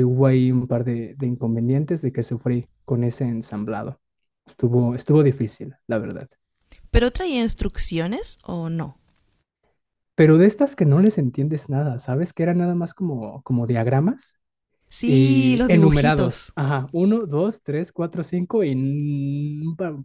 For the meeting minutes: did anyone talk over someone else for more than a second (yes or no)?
yes